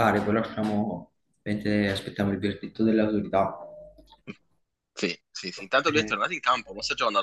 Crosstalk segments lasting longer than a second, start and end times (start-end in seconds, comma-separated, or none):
none